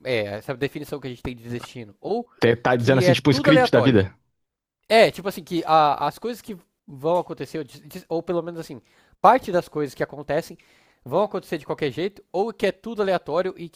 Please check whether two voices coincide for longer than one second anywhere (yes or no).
yes